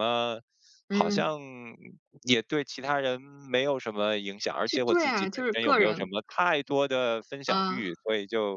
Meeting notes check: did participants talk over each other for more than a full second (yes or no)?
yes